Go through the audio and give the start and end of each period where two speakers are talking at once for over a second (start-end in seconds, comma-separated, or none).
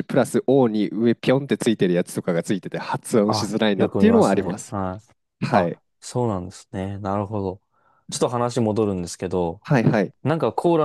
3.2-4.7